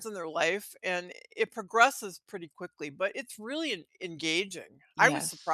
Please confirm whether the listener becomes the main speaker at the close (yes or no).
yes